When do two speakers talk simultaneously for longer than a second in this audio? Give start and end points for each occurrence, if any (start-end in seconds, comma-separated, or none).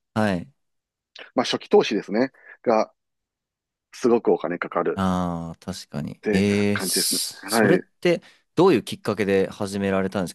6.0-7.8